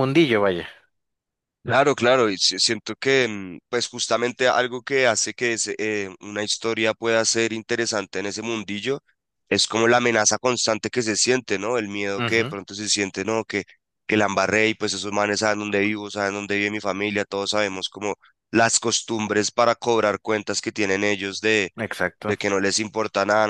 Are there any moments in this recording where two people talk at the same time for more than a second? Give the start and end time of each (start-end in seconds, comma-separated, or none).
none